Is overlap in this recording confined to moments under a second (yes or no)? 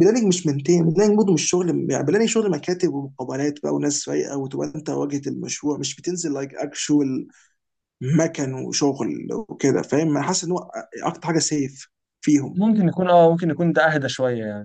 yes